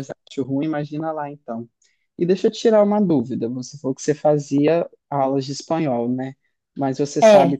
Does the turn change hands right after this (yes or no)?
no